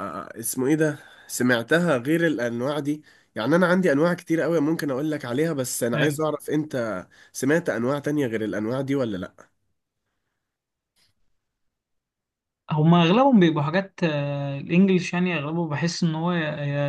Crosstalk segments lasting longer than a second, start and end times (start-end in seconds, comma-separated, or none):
none